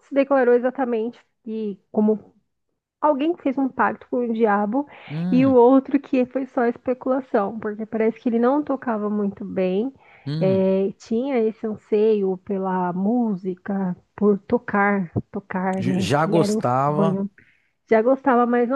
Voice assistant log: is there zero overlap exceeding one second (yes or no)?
no